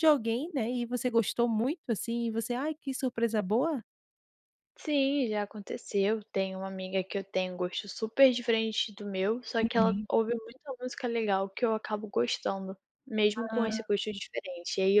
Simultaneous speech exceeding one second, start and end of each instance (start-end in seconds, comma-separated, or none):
none